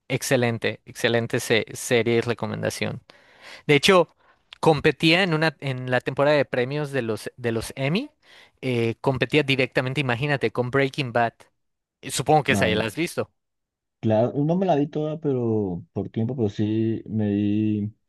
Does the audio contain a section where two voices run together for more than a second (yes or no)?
no